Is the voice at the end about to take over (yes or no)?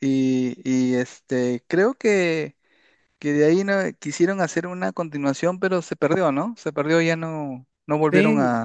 yes